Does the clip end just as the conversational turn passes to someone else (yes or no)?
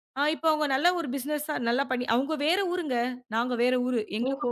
yes